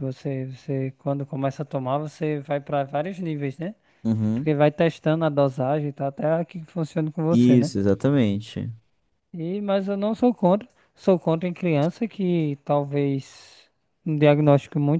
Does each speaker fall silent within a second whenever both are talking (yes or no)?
yes